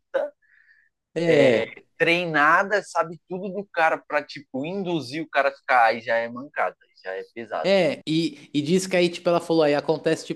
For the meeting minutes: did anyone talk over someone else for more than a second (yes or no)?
no